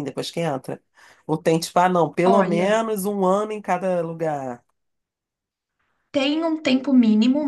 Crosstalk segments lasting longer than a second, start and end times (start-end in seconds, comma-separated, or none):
none